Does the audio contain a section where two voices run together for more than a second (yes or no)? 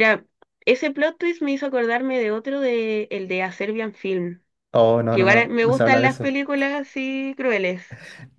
yes